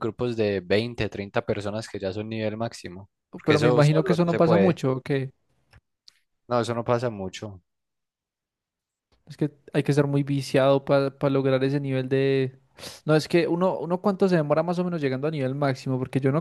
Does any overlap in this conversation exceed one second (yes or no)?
yes